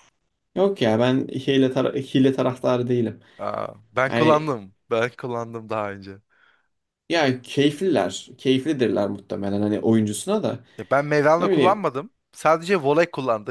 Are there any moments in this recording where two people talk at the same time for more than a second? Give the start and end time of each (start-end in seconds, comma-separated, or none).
none